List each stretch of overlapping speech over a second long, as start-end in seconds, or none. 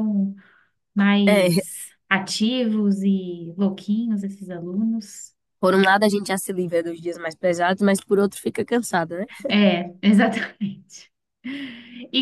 none